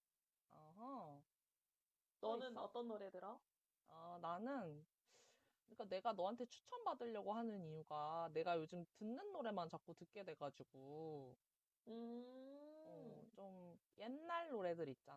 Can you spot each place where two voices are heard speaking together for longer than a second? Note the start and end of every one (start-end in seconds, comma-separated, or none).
none